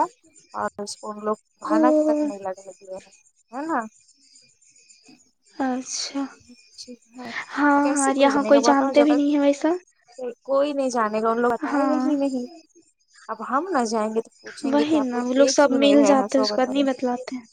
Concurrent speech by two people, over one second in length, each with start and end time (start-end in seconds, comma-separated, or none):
7.8-9.7, 14.6-16.8